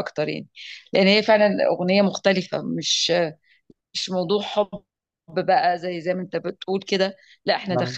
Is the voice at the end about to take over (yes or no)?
no